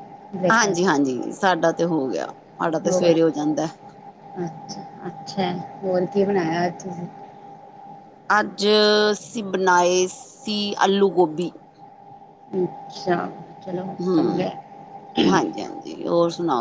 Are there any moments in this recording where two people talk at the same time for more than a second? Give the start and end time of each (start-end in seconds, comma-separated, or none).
none